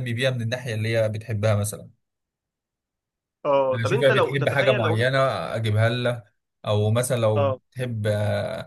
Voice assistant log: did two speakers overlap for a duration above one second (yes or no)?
yes